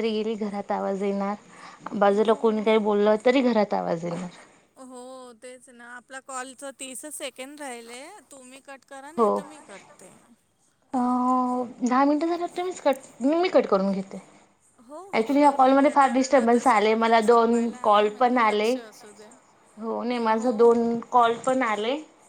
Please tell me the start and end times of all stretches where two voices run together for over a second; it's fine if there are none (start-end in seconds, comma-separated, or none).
15.2-18.7